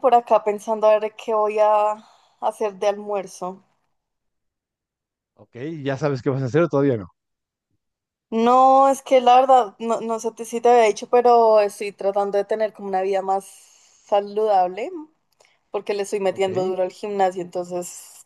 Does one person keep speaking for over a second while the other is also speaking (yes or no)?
no